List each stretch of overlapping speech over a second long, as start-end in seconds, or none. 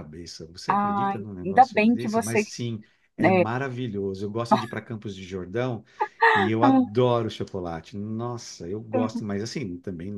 0.7-2.4